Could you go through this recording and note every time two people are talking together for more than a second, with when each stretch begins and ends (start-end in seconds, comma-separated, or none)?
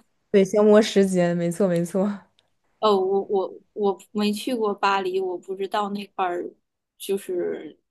none